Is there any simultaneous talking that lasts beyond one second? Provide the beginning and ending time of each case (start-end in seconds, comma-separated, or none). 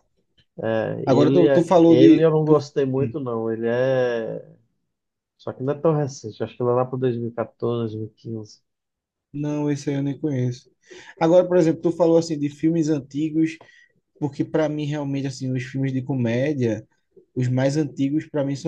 1.1-3.2